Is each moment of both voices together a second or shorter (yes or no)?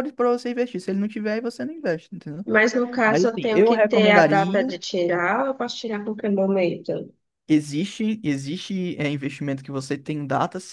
no